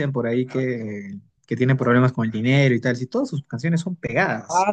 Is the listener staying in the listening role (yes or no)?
no